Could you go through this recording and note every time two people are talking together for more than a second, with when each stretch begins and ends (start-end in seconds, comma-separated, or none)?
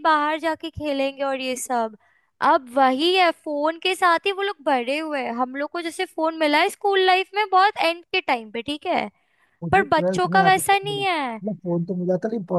9.7-11.4